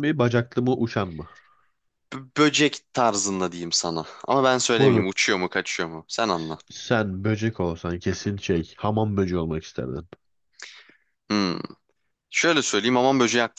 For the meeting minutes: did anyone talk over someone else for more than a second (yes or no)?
no